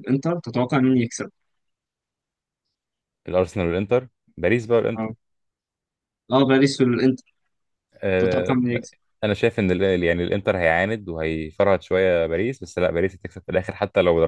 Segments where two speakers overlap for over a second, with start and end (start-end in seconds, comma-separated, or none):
none